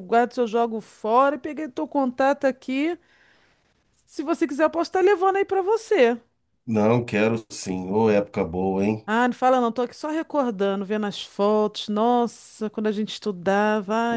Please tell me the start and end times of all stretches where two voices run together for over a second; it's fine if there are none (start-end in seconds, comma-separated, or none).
none